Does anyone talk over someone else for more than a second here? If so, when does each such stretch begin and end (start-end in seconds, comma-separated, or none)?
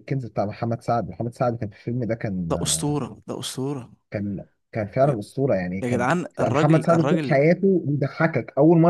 5.8-7.4